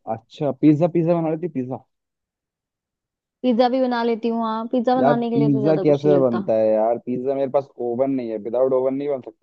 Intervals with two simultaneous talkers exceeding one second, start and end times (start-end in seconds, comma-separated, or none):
5.0-6.5